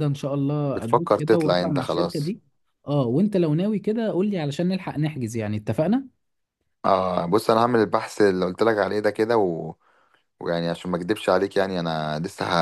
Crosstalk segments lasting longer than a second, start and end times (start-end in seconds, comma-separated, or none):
0.7-2.3